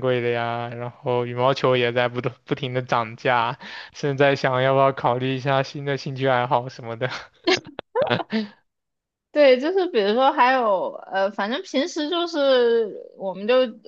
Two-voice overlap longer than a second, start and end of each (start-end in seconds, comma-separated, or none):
none